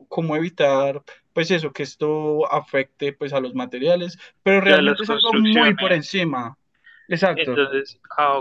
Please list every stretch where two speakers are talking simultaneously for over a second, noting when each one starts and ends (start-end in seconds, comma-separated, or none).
4.7-6.0